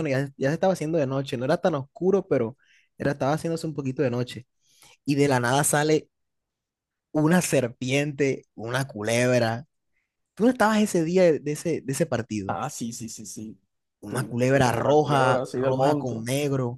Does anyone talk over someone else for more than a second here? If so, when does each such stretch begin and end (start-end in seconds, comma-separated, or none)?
14.1-16.1